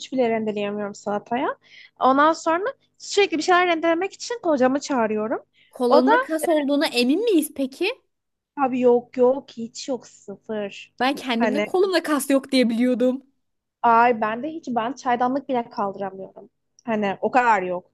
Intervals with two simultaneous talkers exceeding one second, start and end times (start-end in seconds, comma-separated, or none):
none